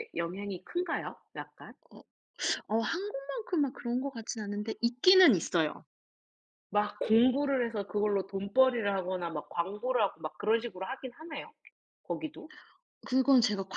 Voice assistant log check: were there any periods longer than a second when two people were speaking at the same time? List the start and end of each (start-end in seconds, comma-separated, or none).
none